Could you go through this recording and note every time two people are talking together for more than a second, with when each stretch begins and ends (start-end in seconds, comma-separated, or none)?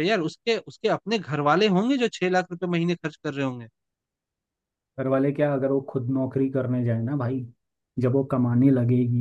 none